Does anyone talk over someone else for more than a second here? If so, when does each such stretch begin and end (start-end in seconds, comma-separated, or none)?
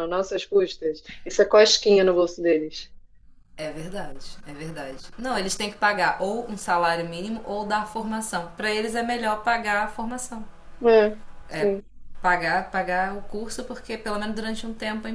none